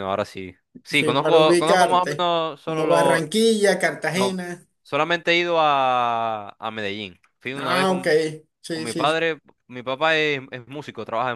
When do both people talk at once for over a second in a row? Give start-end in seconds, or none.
0.9-3.2